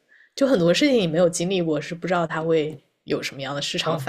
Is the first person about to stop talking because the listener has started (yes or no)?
yes